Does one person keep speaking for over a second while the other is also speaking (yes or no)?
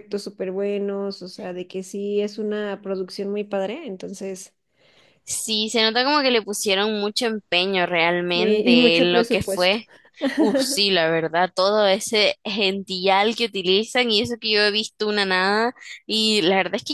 yes